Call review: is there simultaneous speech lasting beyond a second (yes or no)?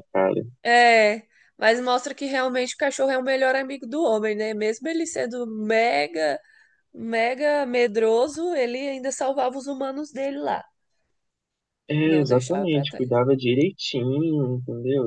yes